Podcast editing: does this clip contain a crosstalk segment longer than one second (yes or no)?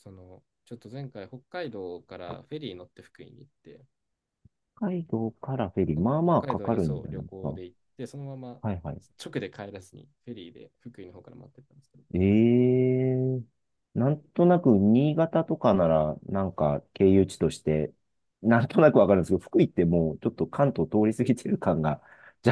yes